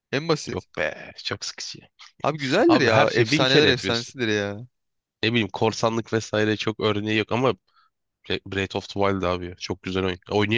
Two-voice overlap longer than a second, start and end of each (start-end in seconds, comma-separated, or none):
2.7-4.1